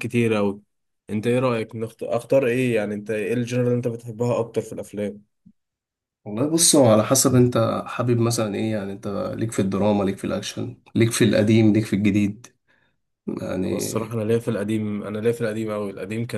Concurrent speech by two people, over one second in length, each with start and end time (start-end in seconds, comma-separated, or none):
none